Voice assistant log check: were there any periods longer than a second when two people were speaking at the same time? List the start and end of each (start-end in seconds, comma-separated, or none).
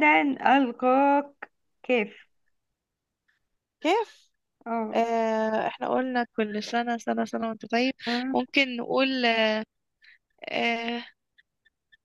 none